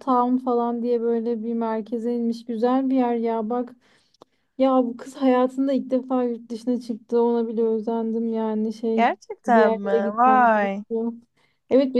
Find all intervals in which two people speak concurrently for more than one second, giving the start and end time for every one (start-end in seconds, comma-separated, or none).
8.9-10.8